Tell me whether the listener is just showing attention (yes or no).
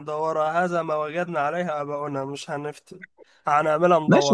no